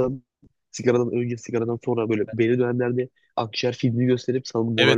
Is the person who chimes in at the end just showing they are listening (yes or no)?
no